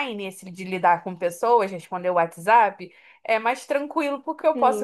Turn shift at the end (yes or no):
yes